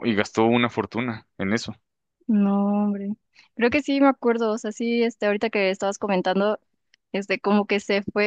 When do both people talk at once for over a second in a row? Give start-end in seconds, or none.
none